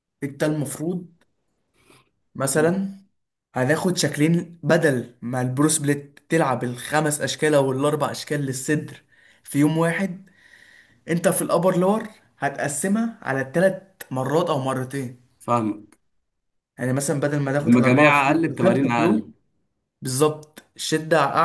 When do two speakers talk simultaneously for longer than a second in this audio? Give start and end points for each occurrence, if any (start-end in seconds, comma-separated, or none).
17.7-19.2